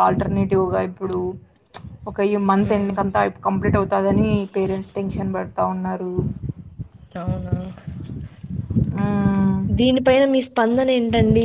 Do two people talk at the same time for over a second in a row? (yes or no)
no